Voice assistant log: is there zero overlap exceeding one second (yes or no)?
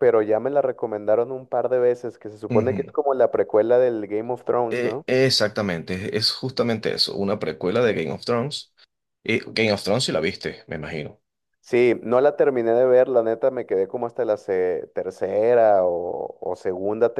yes